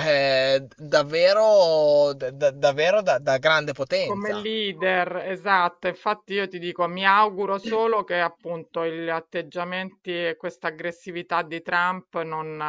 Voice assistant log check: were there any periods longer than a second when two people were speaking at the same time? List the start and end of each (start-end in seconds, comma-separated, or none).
none